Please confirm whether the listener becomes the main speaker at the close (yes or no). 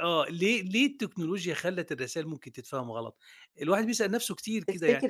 no